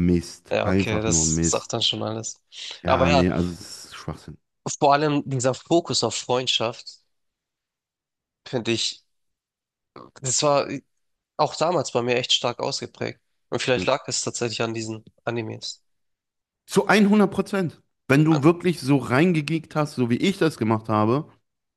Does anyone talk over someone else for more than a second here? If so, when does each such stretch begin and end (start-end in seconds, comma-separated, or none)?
0.5-1.7